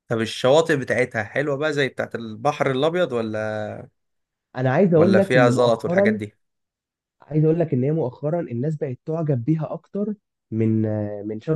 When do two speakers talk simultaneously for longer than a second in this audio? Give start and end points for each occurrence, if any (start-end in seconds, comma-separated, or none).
5.0-6.2